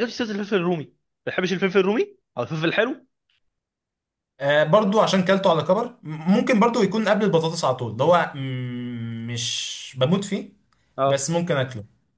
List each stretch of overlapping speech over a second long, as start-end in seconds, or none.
none